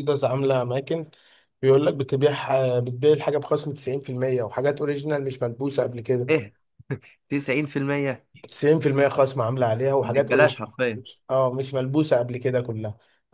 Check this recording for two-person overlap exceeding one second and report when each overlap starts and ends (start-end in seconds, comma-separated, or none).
none